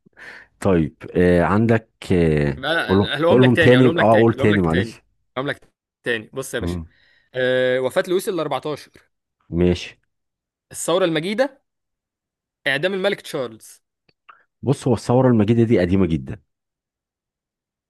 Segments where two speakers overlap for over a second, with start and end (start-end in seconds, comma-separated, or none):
2.6-5.0